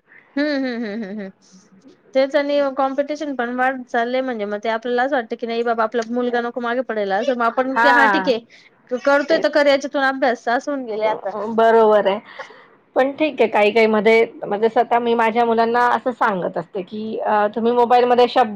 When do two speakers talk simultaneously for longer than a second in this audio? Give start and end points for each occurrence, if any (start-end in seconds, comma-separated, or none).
none